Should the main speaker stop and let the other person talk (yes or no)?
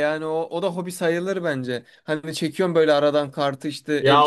yes